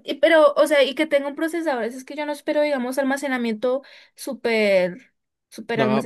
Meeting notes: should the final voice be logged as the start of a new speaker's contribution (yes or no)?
yes